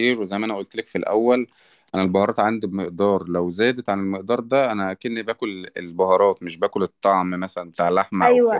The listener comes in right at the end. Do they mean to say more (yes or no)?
yes